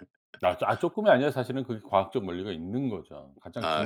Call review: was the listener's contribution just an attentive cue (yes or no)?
no